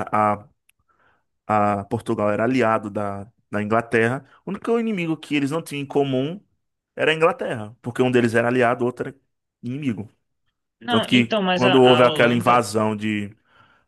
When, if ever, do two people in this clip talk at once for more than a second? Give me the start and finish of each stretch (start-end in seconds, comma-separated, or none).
10.9-12.7